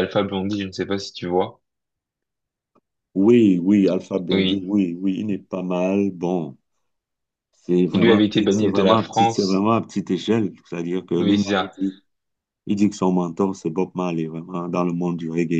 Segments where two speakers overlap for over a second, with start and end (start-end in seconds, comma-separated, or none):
7.8-9.7